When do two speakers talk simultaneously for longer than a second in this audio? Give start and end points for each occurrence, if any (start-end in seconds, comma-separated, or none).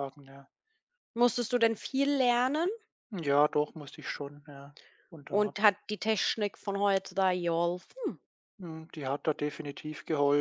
none